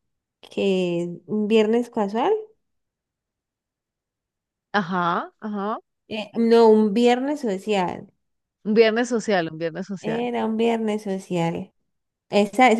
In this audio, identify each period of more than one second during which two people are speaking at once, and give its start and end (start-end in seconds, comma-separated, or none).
none